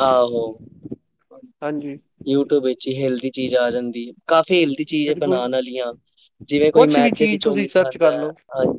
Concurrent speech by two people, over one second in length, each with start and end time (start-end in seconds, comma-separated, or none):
6.8-8.2